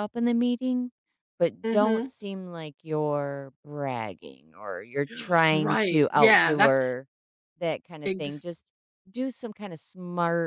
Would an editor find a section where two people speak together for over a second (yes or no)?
yes